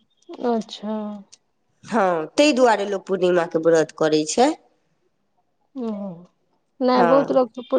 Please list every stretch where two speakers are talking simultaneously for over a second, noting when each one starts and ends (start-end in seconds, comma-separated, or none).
none